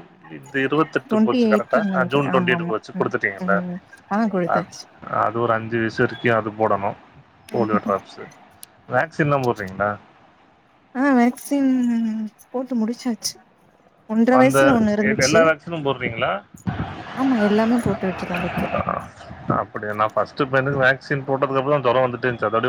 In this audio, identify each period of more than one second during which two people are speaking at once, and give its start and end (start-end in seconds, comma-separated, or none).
1.1-3.1